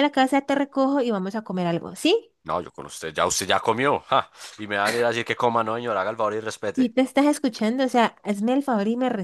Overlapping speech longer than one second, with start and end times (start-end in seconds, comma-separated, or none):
none